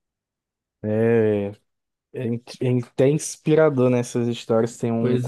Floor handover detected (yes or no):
no